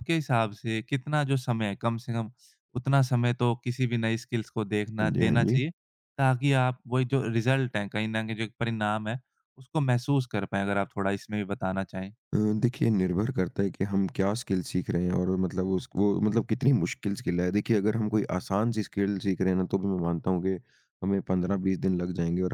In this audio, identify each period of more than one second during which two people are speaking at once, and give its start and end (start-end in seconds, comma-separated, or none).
none